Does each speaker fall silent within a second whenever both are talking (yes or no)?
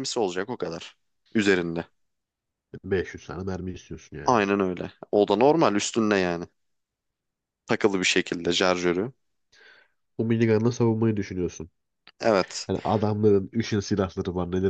yes